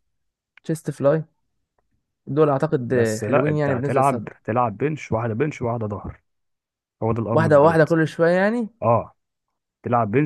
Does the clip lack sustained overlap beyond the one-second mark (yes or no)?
no